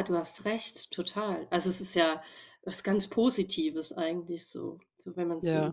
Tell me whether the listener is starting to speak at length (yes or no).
yes